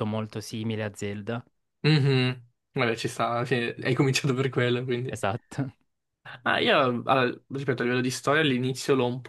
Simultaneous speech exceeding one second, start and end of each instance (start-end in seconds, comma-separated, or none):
none